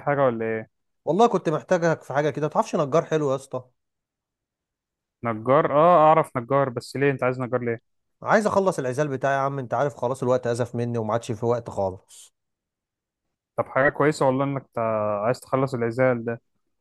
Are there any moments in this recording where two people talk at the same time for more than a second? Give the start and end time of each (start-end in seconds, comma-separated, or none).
none